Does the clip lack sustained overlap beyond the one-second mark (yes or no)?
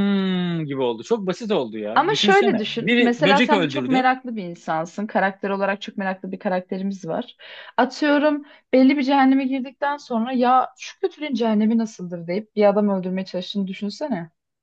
no